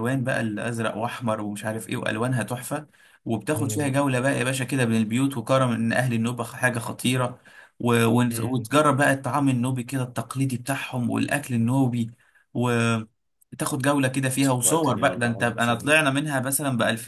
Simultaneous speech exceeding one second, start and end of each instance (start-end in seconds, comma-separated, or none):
14.6-16.0